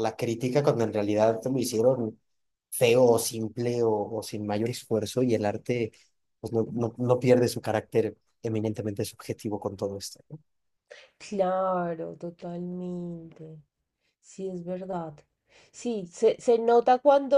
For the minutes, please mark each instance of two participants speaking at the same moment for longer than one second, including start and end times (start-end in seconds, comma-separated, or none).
none